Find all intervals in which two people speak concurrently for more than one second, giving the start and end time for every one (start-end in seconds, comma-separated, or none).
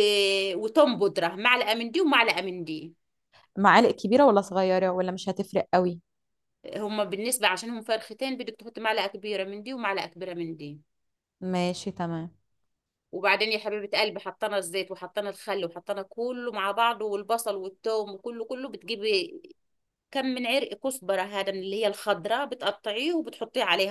none